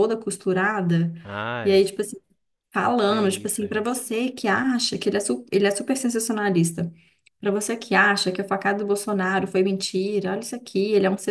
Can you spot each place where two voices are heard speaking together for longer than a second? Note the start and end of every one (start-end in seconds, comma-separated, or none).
2.8-4.0